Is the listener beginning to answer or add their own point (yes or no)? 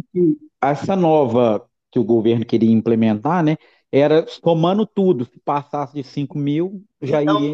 yes